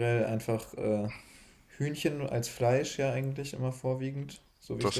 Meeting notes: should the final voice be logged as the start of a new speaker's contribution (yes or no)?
no